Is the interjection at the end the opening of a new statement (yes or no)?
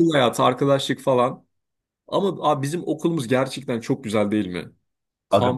no